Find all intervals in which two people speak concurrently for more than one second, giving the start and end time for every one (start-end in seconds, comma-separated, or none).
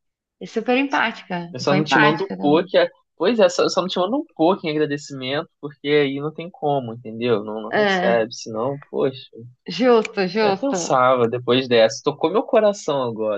1.5-2.7